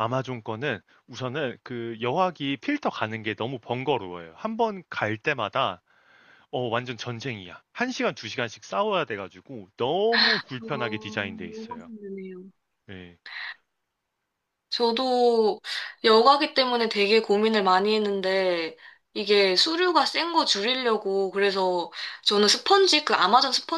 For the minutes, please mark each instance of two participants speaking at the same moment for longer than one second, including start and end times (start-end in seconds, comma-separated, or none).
10.6-11.9